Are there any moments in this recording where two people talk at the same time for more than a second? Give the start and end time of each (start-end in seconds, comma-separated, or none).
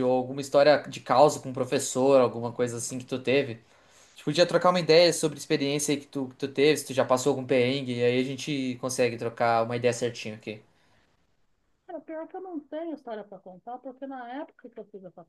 none